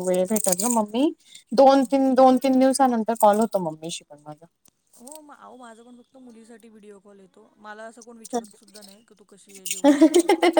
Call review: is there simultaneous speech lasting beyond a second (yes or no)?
no